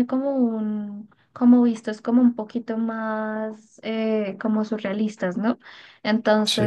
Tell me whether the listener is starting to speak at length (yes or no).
no